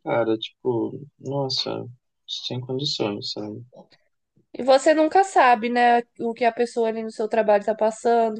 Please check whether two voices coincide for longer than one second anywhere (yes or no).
no